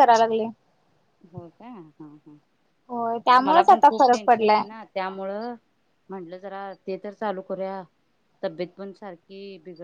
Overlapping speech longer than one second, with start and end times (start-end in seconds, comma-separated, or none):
2.9-4.6